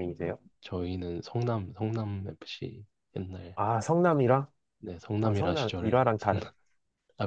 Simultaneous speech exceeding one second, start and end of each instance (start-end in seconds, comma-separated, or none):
5.2-6.5